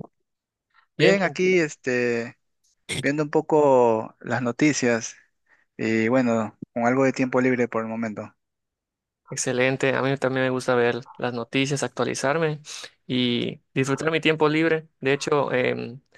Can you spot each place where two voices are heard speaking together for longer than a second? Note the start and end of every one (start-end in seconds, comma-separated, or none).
none